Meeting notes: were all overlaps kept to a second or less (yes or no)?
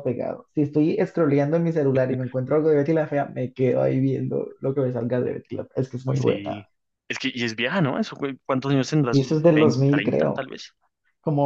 no